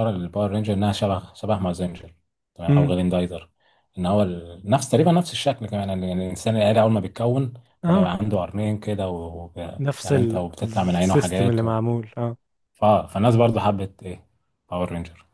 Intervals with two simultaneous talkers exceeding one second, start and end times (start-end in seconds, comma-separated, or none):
9.8-11.7